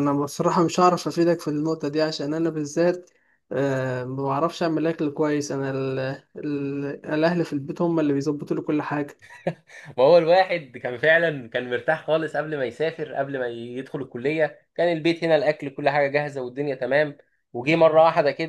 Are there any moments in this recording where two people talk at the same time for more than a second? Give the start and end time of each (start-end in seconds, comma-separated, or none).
none